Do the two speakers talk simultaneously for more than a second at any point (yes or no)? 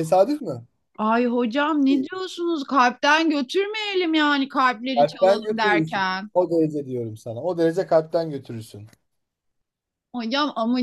yes